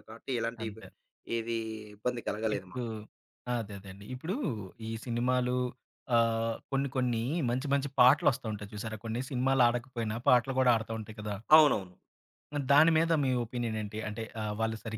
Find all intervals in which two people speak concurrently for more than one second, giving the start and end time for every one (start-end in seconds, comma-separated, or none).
none